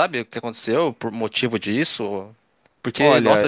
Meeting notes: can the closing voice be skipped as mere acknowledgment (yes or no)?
yes